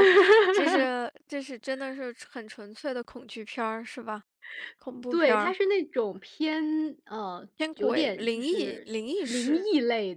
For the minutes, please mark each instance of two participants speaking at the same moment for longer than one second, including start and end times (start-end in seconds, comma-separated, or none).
7.6-9.7